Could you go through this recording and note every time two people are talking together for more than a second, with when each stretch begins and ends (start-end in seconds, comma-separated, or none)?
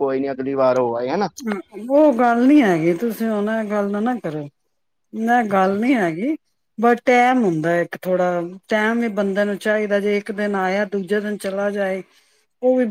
none